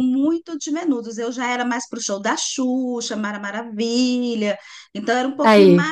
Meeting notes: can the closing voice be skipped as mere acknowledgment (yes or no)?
yes